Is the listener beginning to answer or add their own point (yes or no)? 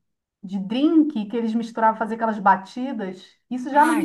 no